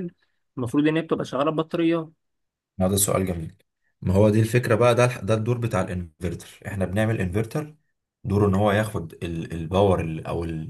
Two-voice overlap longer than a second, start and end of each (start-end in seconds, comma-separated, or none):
none